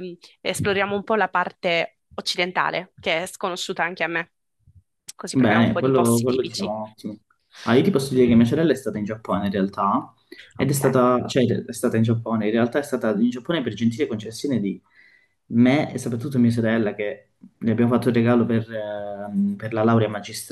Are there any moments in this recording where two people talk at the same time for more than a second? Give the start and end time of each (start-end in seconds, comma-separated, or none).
5.3-6.7